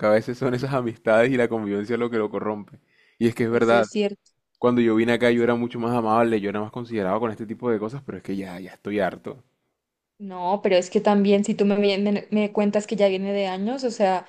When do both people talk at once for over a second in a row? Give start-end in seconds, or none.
none